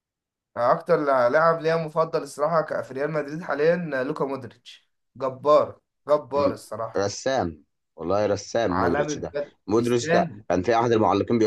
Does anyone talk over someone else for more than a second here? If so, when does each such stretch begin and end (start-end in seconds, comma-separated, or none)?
8.7-10.4